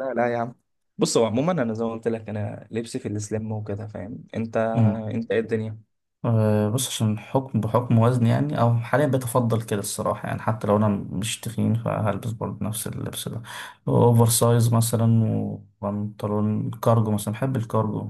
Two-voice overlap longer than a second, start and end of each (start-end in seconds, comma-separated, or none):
none